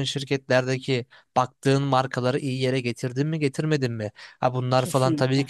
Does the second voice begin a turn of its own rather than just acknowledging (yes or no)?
no